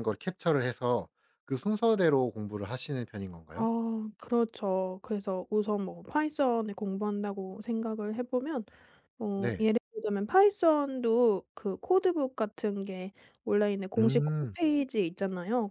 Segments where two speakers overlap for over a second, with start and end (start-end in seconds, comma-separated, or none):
none